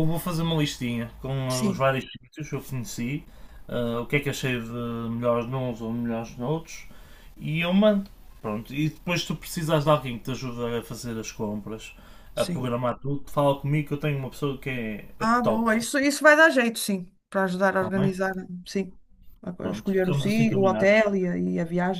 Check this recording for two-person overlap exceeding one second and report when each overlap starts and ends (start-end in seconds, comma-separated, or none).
19.6-21.0